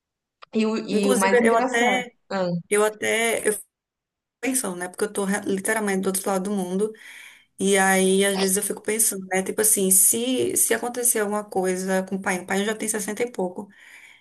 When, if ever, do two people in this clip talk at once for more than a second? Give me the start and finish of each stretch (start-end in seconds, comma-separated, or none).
0.9-2.1